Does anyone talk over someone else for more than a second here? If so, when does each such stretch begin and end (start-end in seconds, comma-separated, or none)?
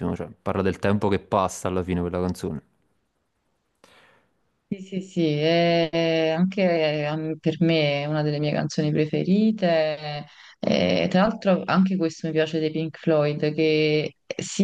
none